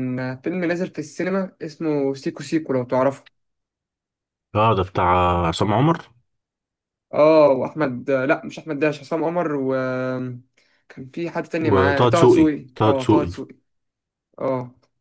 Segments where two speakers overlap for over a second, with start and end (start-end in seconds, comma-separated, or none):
11.7-13.3